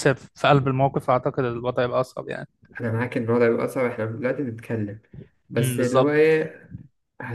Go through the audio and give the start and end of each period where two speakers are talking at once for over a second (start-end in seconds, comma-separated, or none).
none